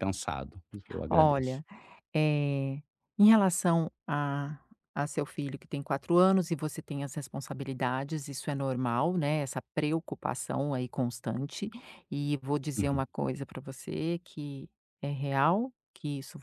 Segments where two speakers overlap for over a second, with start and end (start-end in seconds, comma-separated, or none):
none